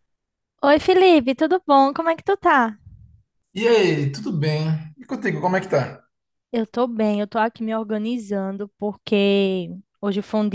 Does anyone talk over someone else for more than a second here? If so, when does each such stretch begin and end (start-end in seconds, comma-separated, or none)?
none